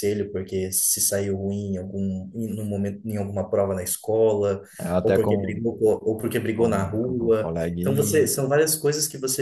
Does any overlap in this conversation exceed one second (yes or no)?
yes